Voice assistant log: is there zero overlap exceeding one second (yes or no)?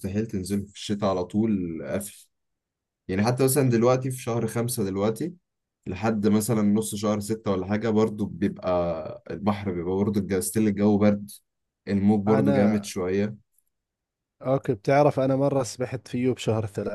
yes